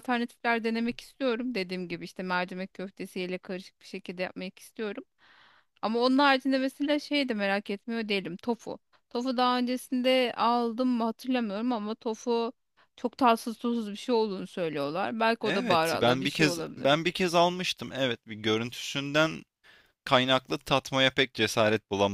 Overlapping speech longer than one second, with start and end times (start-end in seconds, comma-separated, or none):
15.4-16.9